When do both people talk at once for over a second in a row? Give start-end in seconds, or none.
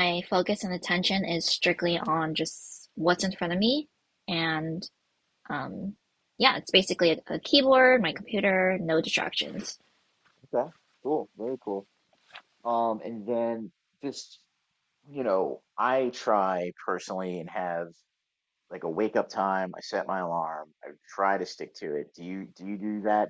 none